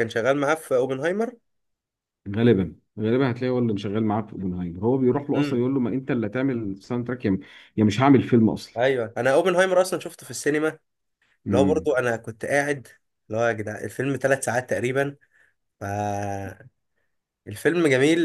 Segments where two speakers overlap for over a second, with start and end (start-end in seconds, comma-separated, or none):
none